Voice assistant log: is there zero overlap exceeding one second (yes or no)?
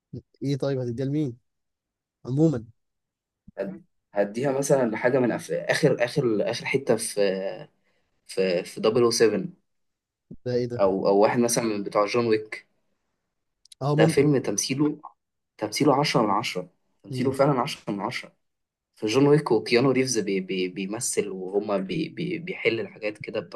yes